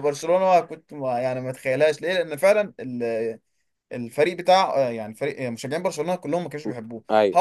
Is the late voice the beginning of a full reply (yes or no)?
no